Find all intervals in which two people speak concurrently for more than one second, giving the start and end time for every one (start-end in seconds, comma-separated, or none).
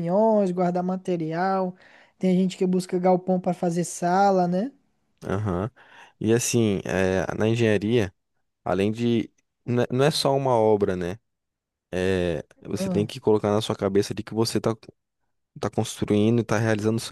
none